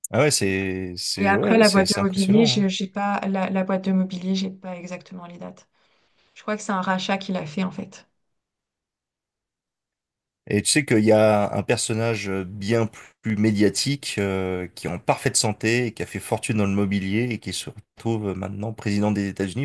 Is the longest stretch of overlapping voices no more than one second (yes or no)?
no